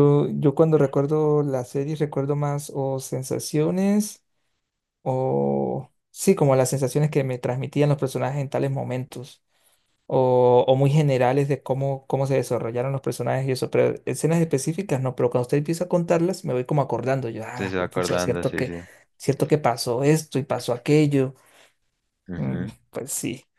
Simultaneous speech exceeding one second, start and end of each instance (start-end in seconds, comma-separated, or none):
17.5-18.7